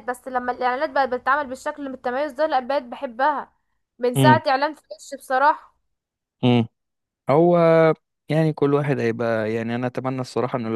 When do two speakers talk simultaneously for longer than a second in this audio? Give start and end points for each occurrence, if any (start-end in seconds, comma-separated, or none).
none